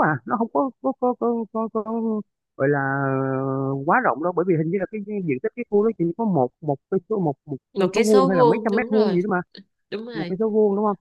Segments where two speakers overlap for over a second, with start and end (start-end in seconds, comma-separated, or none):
7.8-9.2